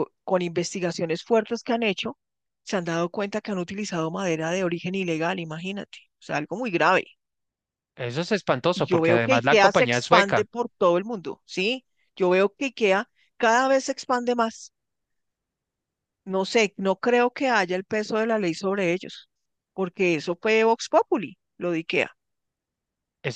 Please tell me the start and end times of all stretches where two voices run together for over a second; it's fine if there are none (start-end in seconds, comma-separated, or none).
8.7-10.5